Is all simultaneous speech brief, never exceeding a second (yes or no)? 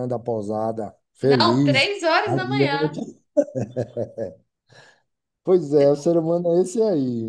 no